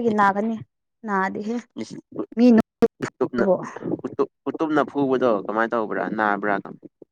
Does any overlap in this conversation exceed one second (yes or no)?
no